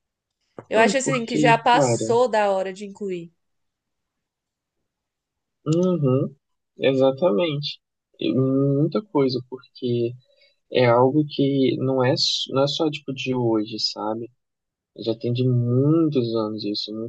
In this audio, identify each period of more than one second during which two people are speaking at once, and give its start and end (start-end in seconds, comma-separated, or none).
0.7-2.1